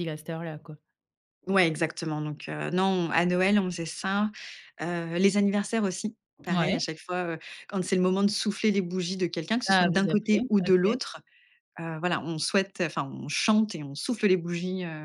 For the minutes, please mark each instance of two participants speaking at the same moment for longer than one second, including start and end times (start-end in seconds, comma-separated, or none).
9.7-11.0